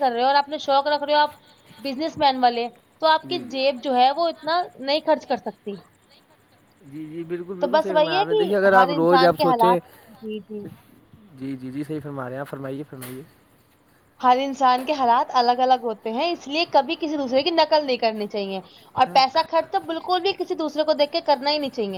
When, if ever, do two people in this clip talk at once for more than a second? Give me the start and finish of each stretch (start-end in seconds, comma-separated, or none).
7.6-9.8